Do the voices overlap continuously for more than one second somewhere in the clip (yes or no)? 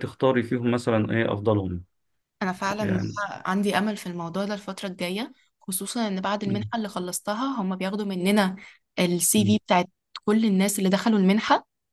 no